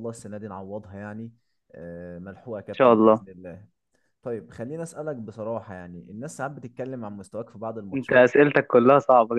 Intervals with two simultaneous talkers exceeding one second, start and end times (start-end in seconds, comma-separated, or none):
none